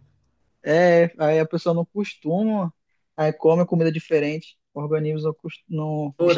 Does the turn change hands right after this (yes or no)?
yes